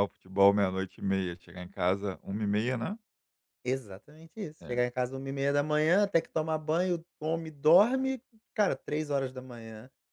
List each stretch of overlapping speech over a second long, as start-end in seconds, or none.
none